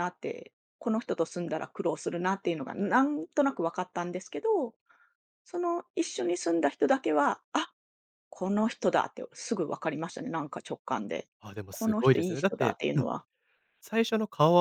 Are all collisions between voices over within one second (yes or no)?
no